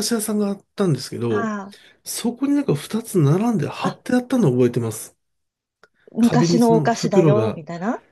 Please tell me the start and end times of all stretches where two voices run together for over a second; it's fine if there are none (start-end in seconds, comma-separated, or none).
6.2-7.6